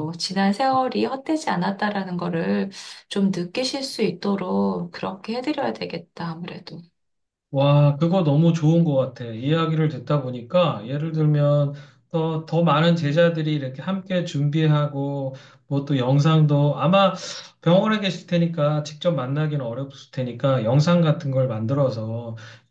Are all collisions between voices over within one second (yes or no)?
yes